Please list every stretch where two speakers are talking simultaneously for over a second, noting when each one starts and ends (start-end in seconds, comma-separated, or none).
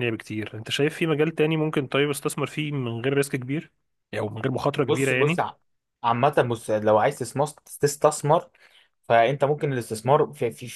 none